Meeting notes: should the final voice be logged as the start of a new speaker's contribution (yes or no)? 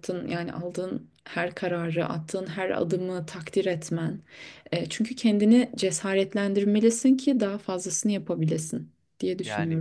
yes